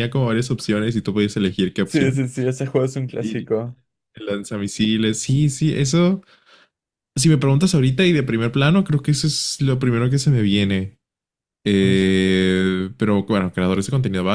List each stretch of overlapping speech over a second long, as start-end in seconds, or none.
none